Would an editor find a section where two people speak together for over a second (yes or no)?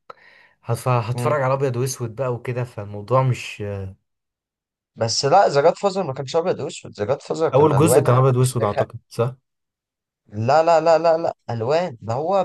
yes